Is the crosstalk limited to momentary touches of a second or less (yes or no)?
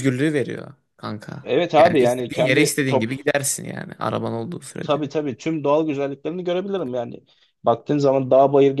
no